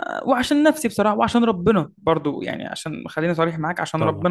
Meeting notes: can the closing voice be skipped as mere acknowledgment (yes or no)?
yes